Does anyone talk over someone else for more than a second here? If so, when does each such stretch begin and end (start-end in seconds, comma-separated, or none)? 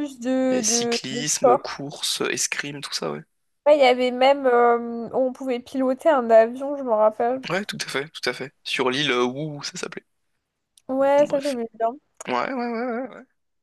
0.5-1.8